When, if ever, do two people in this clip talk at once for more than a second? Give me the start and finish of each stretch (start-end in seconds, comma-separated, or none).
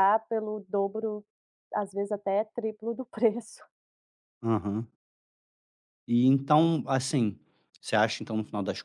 none